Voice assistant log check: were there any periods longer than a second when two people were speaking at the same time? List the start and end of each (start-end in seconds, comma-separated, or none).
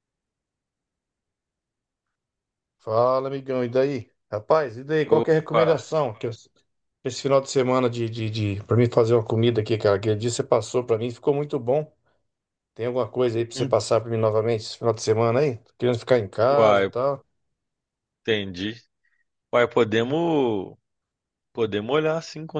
none